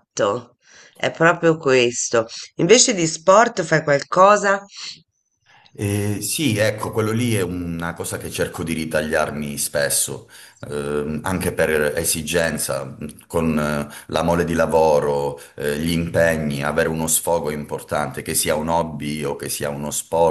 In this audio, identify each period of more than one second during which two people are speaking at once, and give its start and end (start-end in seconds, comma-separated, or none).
none